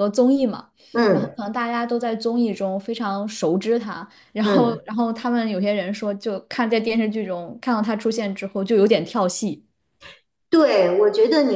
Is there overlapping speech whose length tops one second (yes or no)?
no